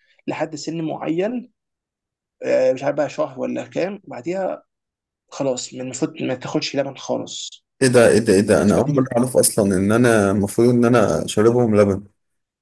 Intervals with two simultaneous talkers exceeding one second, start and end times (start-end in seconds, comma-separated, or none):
none